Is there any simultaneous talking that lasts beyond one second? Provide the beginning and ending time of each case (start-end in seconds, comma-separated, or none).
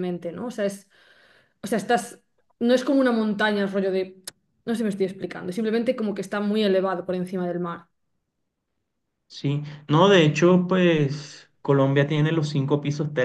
none